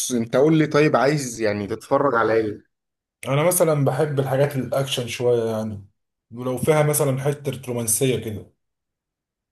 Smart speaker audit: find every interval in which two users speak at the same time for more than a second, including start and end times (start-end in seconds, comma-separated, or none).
none